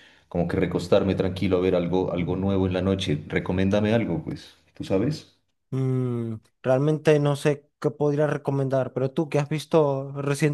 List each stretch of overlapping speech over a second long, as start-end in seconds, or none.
none